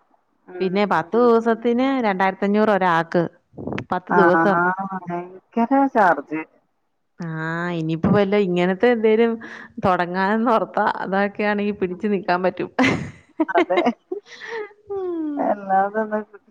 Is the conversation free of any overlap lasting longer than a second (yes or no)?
yes